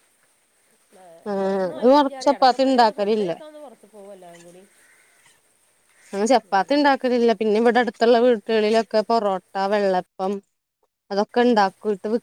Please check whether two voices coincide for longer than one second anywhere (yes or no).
yes